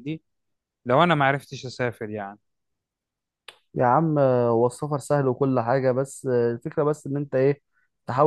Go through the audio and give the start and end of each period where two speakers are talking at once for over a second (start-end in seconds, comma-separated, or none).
none